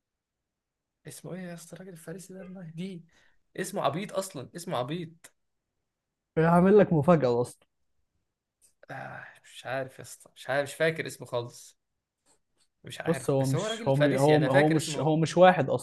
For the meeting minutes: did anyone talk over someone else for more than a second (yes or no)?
yes